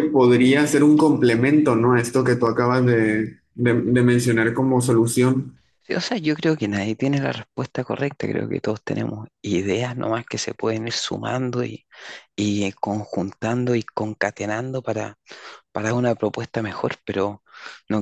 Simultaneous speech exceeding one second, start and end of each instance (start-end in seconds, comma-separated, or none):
none